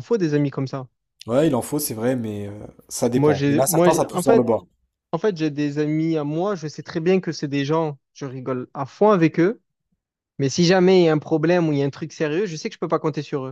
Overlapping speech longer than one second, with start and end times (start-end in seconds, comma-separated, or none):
3.0-4.5